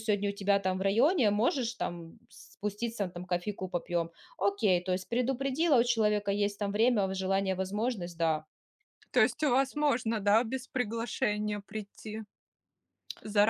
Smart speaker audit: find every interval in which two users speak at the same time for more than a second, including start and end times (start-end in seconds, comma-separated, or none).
none